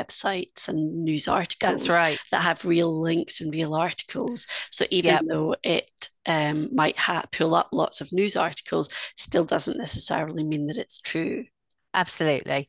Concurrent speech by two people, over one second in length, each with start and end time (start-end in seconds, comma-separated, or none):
none